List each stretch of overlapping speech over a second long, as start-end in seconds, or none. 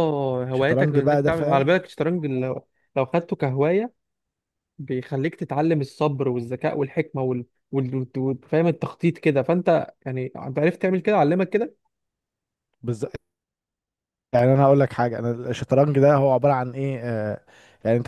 0.5-1.8